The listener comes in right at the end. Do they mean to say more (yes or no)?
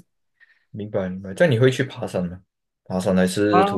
yes